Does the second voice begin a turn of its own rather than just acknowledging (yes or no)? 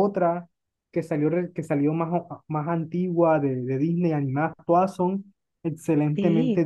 yes